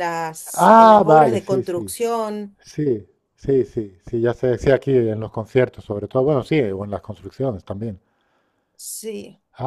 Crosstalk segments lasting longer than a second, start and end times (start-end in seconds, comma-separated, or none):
0.5-1.9